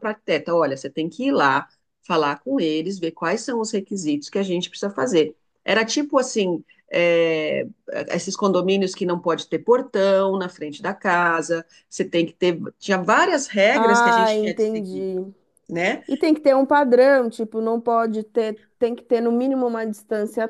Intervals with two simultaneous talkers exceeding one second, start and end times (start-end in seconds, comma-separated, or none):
13.7-15.1